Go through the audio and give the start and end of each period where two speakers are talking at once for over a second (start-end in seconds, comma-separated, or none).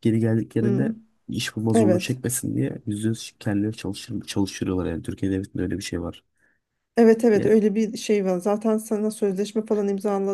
none